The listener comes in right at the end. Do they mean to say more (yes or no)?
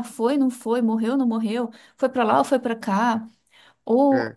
no